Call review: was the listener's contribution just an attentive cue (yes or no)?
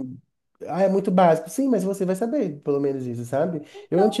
yes